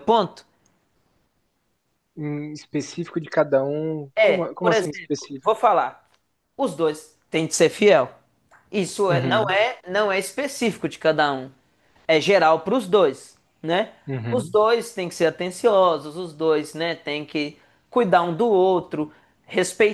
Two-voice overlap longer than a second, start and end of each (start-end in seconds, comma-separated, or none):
4.2-5.5